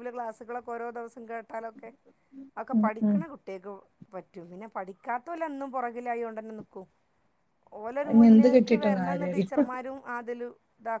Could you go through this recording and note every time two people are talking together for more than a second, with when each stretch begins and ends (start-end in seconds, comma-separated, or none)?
8.1-9.6